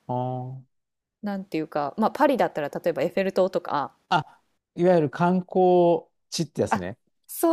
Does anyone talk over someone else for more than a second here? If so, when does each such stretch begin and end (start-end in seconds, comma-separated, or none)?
none